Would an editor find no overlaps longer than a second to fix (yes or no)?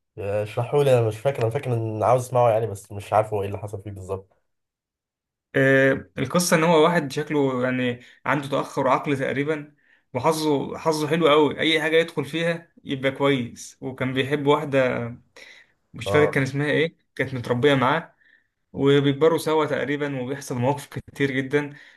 yes